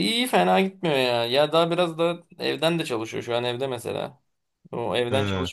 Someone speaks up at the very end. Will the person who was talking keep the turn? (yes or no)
yes